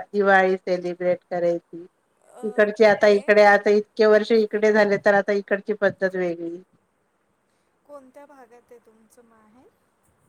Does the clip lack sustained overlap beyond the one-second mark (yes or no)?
yes